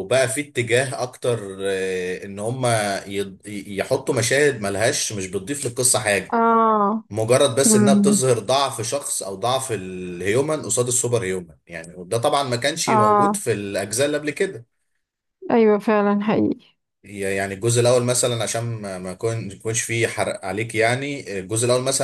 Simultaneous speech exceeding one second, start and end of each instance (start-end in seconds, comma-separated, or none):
none